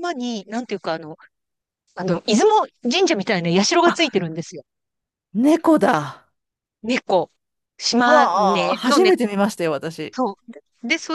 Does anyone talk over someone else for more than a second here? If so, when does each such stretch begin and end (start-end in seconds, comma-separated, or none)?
7.9-9.2